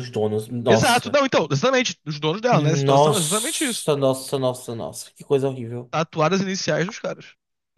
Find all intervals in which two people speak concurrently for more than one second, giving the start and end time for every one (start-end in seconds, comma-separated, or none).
2.5-3.9